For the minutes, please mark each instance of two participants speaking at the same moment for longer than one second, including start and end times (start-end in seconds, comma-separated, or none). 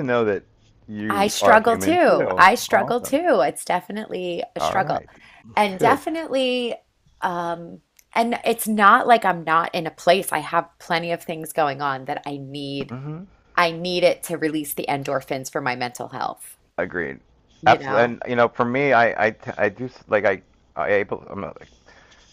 1.1-3.2